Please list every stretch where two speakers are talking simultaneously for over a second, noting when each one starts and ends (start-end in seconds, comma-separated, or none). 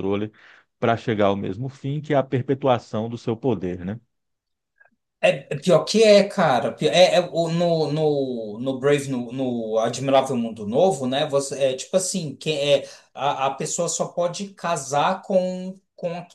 none